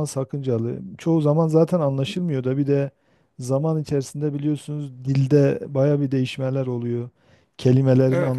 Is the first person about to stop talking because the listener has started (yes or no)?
yes